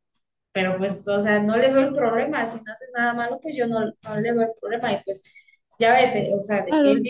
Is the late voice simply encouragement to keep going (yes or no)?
yes